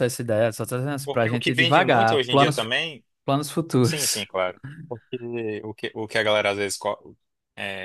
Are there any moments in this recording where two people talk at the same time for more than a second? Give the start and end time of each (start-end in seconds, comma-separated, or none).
1.0-2.7